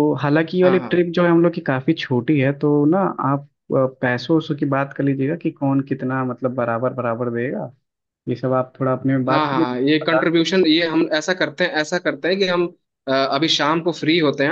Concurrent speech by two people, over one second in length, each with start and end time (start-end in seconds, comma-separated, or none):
9.3-10.5